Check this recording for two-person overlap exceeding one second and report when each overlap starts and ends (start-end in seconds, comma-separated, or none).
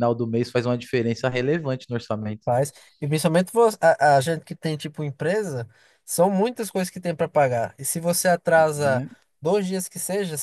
none